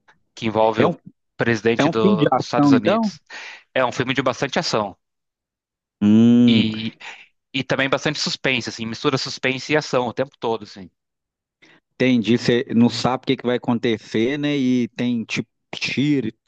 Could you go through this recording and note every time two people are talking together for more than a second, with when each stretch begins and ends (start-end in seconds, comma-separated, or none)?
1.8-3.1